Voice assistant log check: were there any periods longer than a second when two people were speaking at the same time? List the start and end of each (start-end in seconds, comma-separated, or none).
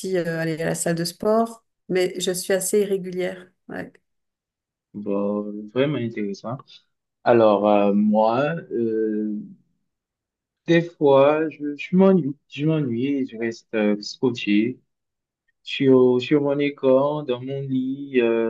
none